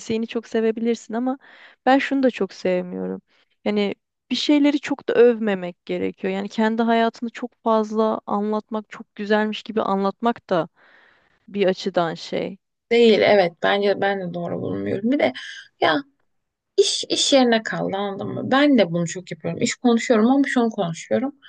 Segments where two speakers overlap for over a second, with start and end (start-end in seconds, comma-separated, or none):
none